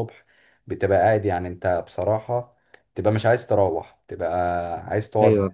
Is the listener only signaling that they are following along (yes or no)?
yes